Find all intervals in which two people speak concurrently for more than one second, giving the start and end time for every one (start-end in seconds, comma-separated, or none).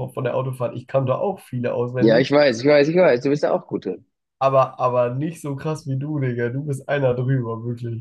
none